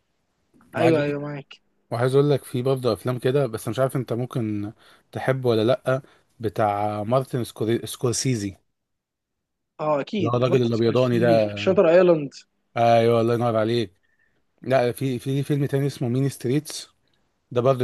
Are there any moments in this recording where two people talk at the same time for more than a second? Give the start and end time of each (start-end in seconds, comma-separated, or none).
10.2-11.5